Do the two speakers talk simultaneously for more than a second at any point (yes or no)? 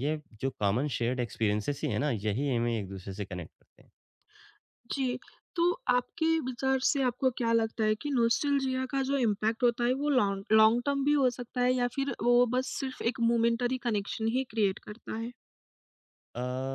no